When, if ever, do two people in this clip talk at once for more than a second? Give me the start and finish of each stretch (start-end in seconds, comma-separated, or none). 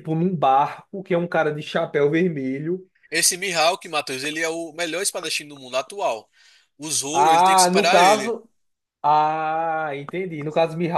7.1-8.4